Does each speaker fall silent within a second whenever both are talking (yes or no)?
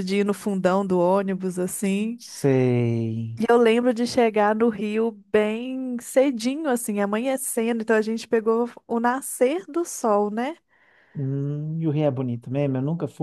yes